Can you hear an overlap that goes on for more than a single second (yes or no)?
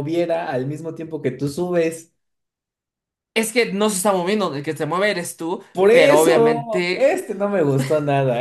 yes